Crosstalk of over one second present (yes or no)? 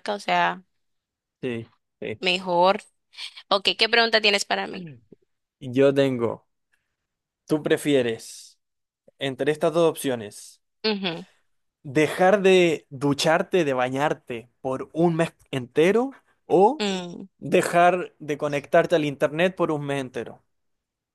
no